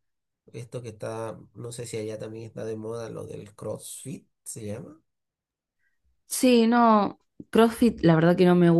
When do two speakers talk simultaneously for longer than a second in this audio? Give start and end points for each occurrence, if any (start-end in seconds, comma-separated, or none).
none